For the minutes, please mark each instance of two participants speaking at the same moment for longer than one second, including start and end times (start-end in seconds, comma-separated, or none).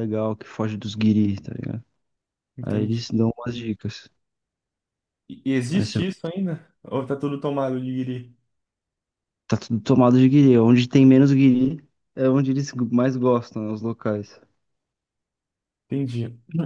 none